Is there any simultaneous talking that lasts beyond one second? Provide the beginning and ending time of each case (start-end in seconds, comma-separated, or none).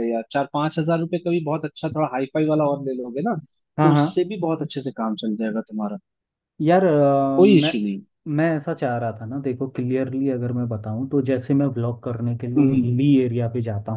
none